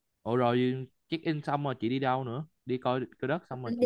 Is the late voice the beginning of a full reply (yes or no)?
yes